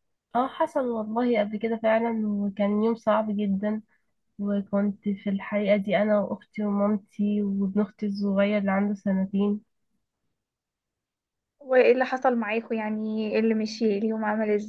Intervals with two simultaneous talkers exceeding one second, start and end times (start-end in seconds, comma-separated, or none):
none